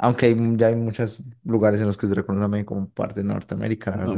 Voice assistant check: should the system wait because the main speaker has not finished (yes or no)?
no